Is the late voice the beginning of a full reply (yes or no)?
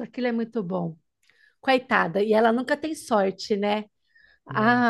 no